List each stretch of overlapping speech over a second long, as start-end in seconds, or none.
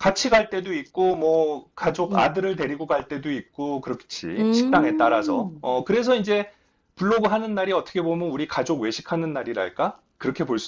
4.4-5.6